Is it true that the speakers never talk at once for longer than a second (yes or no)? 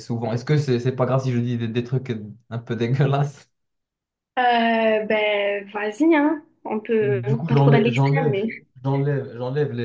no